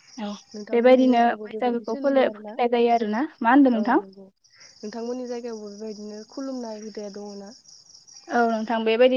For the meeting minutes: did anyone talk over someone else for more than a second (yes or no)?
yes